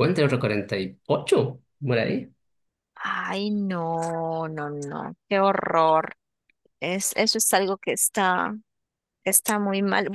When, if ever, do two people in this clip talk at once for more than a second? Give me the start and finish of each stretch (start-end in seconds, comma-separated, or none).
none